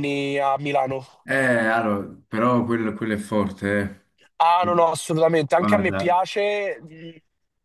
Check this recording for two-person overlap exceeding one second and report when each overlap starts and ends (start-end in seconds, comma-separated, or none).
none